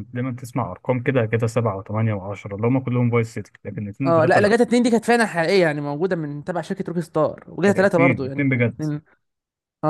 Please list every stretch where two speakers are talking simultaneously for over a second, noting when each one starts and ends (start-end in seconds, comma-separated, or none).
7.6-8.8